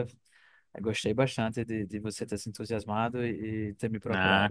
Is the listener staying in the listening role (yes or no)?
no